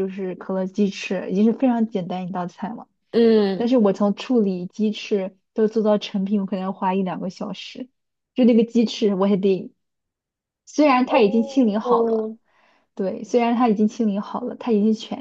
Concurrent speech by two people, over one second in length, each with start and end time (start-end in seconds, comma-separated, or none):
11.1-12.3